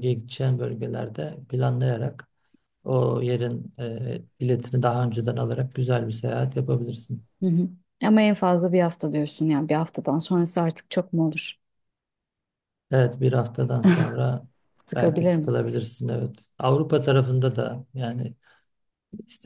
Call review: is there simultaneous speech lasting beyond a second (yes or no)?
no